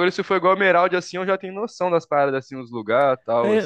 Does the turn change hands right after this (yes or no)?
yes